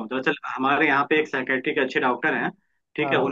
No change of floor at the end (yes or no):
yes